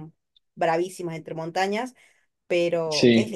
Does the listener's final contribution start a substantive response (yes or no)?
no